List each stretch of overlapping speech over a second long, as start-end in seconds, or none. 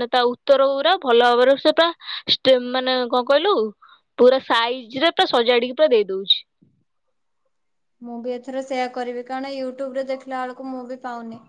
none